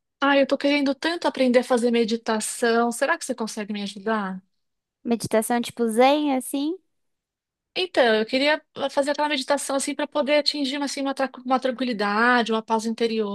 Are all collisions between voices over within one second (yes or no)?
yes